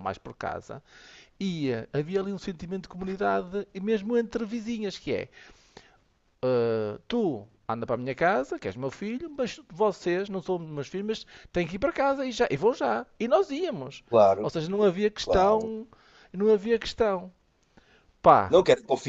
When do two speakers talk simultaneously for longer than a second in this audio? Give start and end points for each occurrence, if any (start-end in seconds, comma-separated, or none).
none